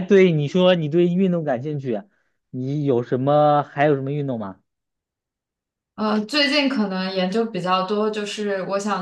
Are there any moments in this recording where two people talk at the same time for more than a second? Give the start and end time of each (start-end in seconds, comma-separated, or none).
none